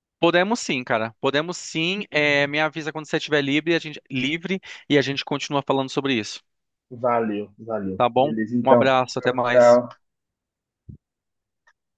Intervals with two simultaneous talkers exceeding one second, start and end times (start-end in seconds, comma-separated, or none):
8.0-9.8